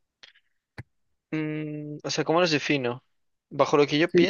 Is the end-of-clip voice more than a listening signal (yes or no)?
yes